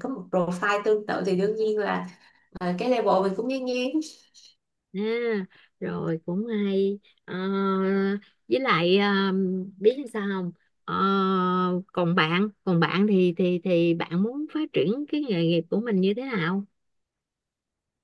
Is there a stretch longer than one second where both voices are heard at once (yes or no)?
no